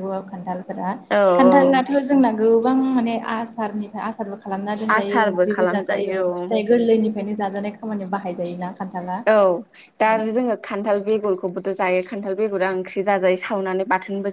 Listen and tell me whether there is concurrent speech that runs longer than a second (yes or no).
yes